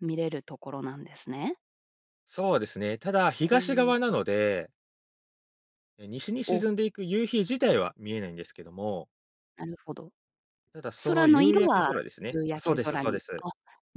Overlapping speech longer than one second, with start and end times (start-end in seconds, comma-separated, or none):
11.1-13.4